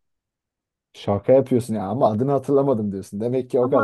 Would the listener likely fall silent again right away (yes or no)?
no